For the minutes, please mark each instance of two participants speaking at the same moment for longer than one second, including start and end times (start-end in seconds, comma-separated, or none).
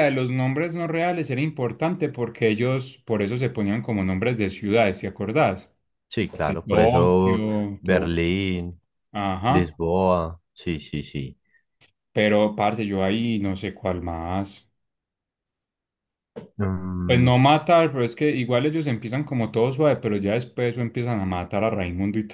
6.5-8.2